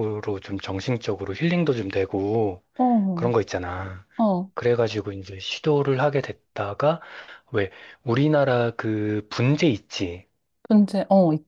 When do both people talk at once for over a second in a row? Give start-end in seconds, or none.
none